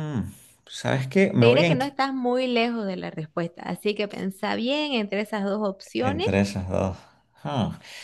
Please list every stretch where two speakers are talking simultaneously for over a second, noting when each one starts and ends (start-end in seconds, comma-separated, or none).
none